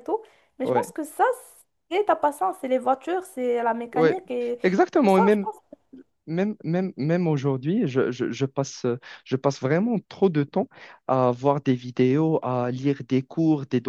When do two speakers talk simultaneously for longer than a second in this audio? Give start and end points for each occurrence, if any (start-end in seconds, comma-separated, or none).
none